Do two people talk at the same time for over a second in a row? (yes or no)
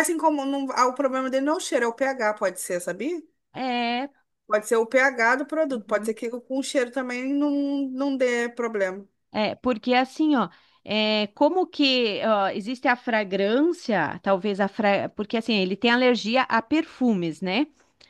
no